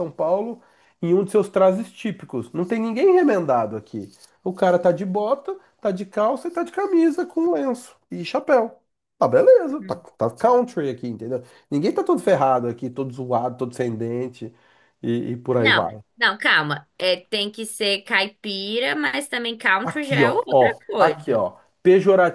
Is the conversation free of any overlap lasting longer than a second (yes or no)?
no